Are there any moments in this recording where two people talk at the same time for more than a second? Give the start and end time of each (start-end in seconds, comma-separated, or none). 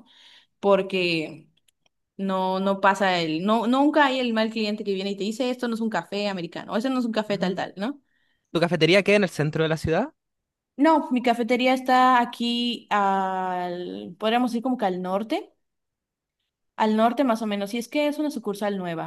none